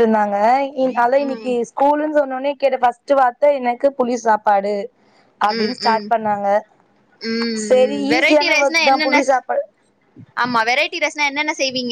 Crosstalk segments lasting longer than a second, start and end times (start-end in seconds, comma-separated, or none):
7.7-9.2